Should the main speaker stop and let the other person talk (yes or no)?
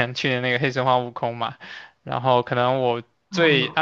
no